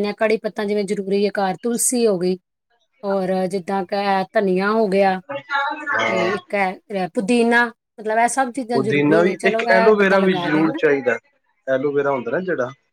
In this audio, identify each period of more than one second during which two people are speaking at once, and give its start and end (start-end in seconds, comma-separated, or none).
8.7-10.8